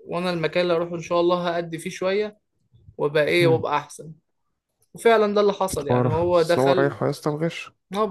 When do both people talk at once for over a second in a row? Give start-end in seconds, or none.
5.7-7.0